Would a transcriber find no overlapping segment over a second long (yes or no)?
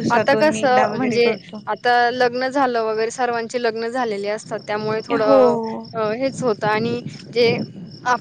yes